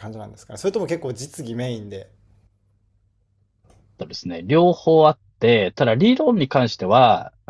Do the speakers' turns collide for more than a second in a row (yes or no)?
no